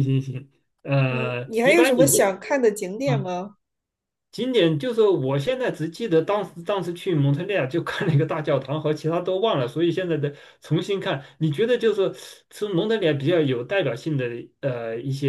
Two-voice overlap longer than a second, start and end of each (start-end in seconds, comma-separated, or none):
1.1-2.4